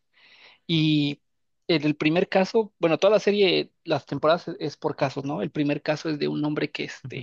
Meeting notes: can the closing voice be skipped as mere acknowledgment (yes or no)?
yes